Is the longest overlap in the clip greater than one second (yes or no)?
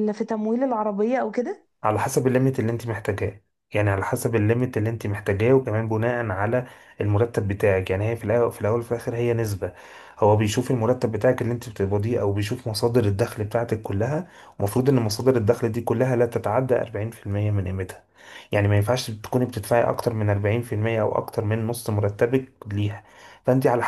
no